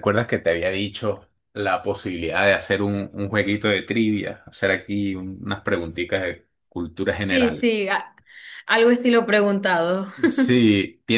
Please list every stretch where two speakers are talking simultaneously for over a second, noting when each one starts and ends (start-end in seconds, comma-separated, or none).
none